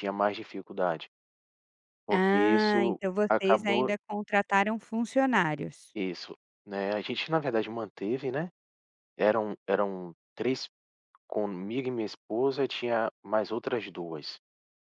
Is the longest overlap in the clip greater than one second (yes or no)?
yes